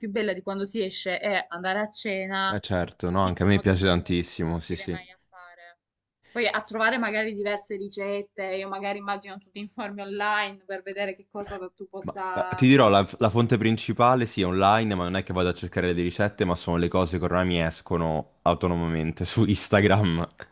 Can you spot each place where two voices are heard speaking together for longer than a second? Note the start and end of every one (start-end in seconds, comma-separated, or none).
3.2-5.1